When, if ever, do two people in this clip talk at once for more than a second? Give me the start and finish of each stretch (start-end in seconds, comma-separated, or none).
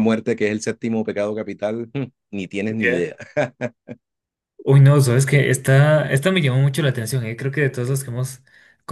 none